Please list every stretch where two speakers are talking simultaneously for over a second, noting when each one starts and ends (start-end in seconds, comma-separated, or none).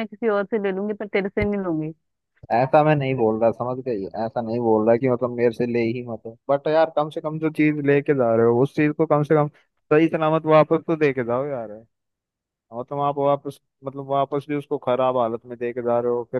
none